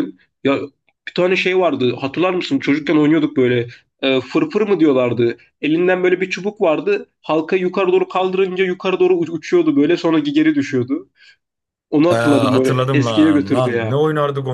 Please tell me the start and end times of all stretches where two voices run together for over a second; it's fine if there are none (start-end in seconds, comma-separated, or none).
12.1-14.0